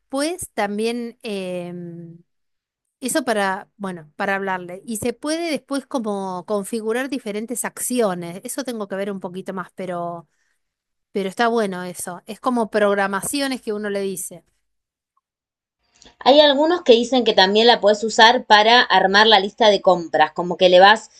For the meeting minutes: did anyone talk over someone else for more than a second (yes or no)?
no